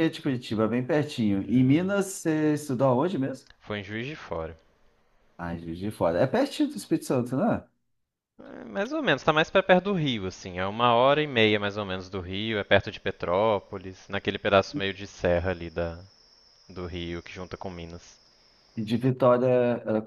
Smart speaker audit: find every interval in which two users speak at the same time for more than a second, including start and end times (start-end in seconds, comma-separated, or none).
none